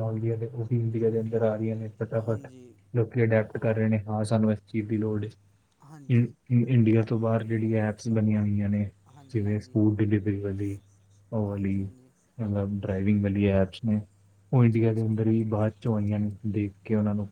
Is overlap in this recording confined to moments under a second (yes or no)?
yes